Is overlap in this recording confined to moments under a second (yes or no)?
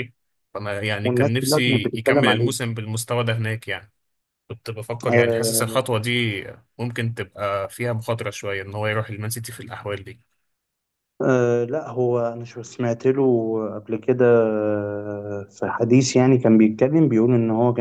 no